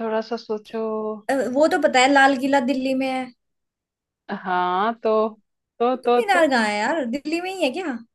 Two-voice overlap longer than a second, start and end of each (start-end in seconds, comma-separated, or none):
none